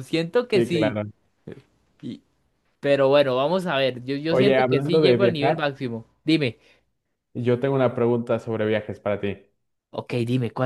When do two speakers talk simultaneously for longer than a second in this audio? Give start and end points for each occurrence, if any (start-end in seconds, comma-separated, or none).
4.3-5.6